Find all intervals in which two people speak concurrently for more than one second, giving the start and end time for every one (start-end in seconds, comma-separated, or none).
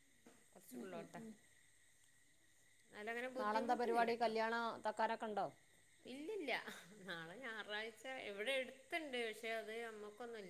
none